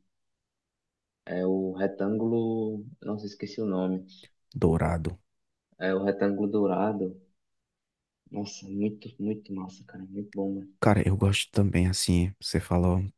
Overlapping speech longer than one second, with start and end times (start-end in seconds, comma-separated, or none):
none